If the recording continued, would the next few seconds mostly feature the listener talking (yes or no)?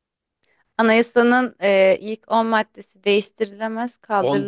yes